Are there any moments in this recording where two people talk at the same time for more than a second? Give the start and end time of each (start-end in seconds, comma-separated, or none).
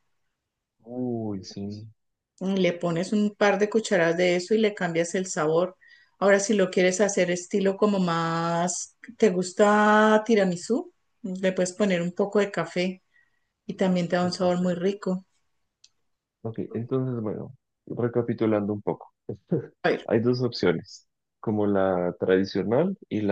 none